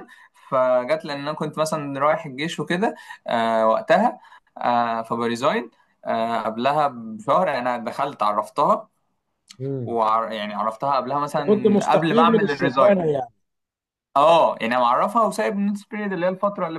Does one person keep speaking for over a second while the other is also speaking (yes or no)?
yes